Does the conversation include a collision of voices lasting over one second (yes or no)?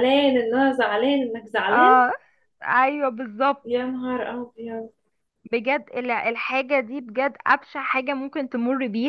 no